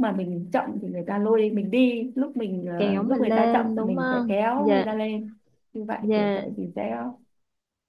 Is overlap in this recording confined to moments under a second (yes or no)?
no